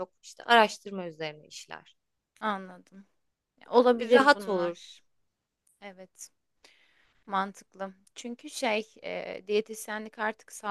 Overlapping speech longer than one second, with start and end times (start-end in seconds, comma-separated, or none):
3.7-5.0